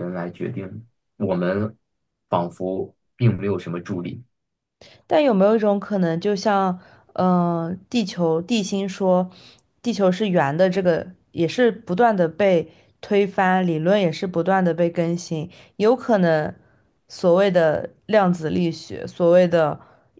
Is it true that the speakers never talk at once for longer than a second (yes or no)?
yes